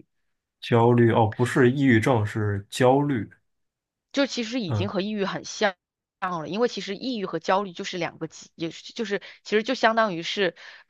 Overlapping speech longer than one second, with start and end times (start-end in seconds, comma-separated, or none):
none